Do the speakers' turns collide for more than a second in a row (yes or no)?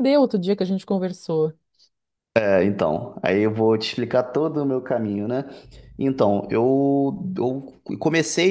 no